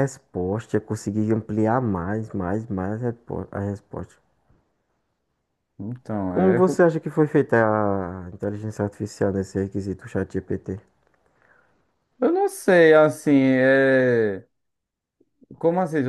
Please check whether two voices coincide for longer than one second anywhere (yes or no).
no